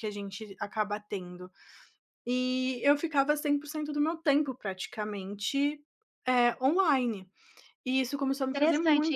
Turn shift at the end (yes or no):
yes